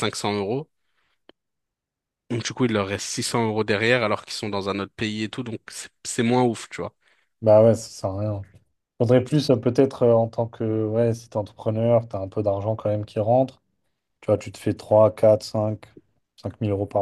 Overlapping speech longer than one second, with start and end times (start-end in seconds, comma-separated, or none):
none